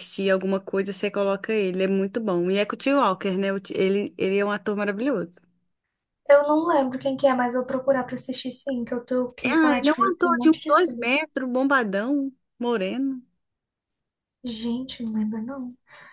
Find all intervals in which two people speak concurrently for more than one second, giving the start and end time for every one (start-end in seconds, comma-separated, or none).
9.4-11.1